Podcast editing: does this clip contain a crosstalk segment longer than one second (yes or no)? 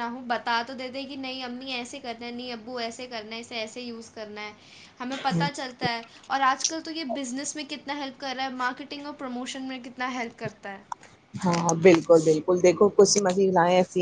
no